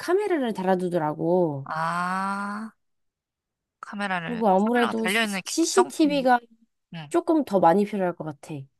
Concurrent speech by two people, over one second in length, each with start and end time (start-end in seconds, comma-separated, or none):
4.2-6.3